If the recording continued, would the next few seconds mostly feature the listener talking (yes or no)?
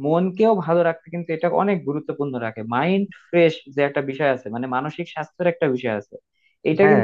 no